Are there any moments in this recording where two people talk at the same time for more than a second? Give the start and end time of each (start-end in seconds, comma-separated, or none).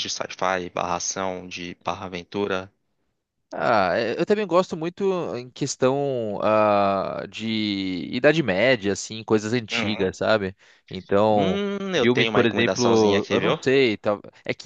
11.3-13.6